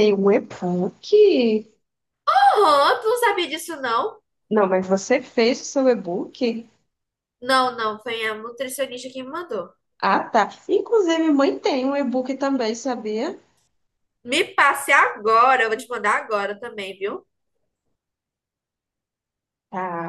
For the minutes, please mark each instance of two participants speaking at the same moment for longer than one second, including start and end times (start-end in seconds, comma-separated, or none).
none